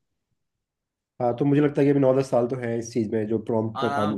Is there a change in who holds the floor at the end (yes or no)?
yes